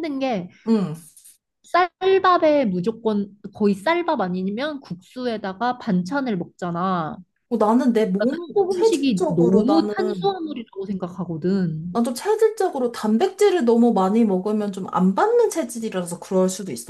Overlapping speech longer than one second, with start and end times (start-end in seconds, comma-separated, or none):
8.2-10.3